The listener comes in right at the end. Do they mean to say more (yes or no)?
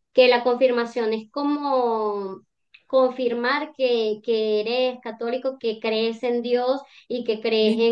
no